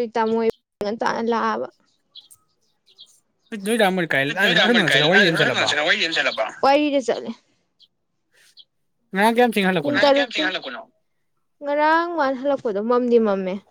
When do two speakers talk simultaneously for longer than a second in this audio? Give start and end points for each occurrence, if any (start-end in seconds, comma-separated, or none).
4.5-5.7